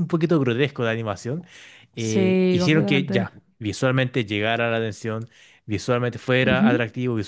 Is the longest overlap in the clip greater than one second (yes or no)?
yes